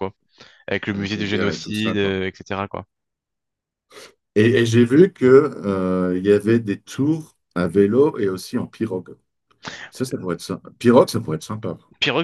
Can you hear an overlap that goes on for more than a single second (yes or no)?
yes